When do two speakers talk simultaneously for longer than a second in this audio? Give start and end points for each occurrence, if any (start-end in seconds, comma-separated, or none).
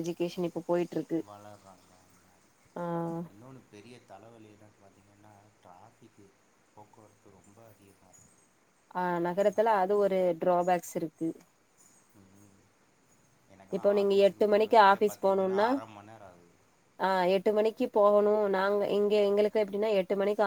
13.8-15.7